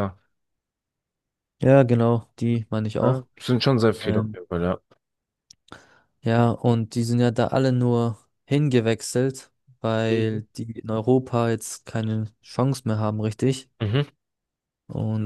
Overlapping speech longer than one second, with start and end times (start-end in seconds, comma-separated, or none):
none